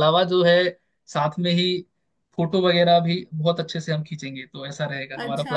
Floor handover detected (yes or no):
yes